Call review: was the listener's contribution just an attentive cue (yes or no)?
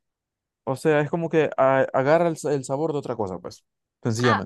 no